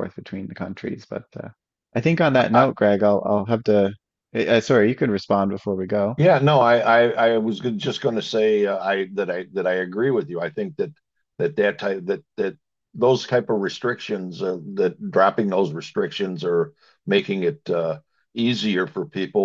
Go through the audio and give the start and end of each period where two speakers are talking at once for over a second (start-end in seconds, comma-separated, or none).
none